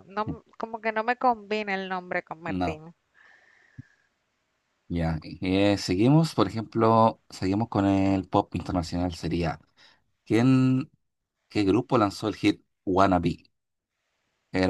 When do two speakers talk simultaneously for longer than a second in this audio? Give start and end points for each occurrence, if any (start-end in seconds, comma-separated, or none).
none